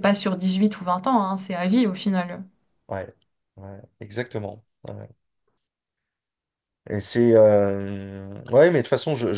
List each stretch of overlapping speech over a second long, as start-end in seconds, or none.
none